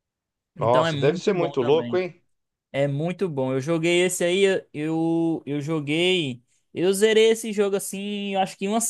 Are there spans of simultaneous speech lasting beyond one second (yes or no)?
yes